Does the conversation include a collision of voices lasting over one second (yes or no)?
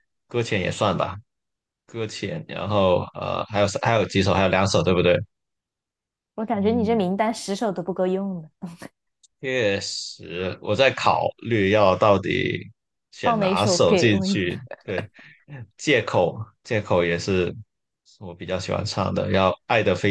yes